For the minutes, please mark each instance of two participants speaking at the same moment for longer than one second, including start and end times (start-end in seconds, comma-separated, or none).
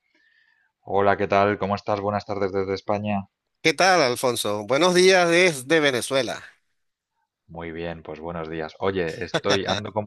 none